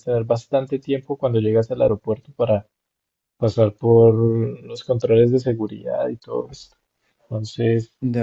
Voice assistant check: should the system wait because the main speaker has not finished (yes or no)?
yes